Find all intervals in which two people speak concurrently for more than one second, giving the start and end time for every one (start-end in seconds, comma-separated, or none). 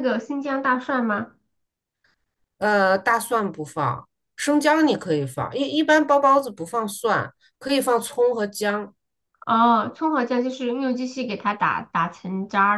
none